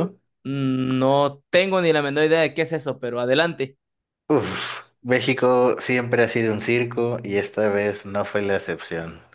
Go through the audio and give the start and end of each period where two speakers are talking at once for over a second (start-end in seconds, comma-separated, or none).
none